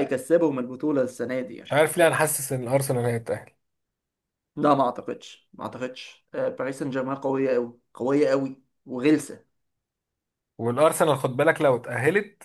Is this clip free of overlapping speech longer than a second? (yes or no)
yes